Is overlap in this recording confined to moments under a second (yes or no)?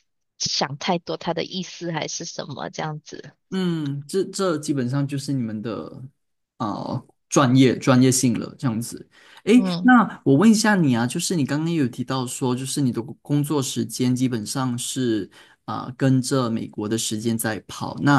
yes